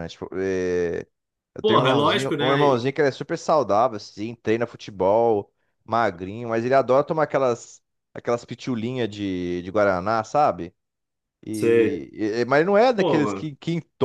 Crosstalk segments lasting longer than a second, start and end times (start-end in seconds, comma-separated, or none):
1.6-2.9